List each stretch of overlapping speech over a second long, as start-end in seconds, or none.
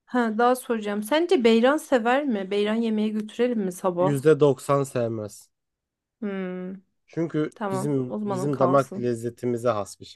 7.5-9.1